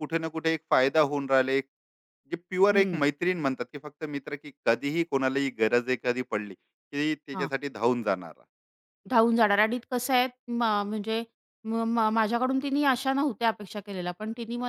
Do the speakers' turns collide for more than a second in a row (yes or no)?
no